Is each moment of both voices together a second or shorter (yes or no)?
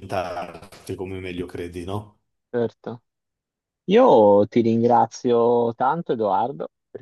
yes